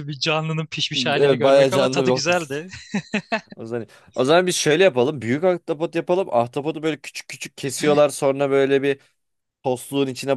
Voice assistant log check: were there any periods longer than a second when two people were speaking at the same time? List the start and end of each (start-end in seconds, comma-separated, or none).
1.2-2.6